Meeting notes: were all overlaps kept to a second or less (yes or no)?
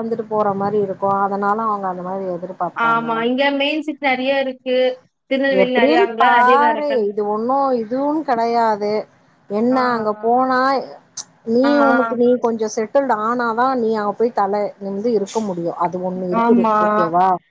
yes